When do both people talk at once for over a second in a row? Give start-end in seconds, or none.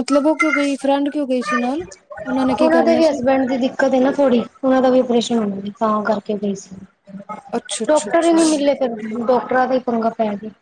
none